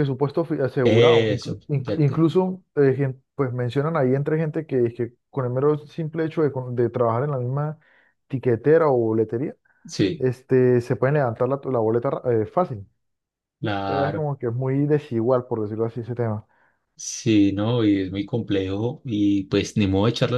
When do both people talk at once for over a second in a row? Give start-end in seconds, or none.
0.8-2.2